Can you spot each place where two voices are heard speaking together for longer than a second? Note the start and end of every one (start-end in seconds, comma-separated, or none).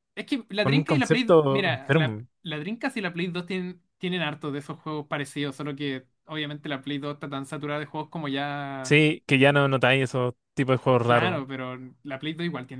0.6-2.3